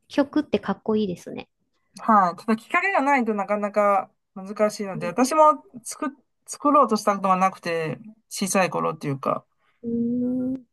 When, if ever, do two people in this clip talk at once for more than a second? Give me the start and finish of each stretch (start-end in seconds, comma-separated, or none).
none